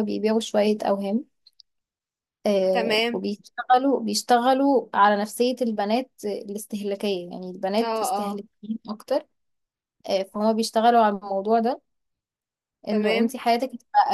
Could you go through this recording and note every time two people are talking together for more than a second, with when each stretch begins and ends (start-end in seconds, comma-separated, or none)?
none